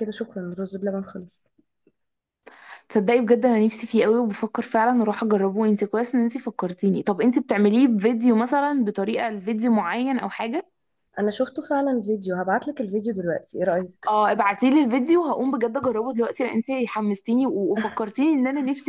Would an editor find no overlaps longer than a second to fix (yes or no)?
yes